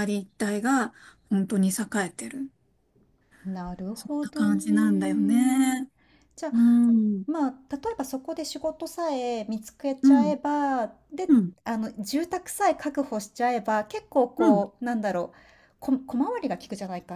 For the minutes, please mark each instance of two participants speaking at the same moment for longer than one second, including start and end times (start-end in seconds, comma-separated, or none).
3.9-5.8